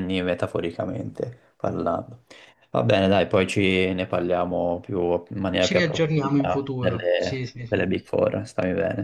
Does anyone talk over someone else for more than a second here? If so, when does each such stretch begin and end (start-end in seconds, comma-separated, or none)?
5.6-7.8